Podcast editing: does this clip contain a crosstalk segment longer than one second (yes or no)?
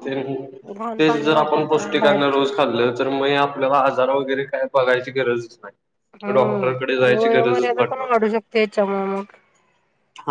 yes